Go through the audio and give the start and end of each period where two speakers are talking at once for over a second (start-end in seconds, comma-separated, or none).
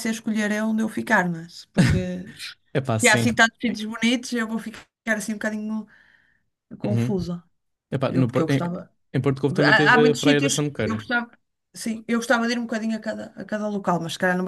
9.6-11.0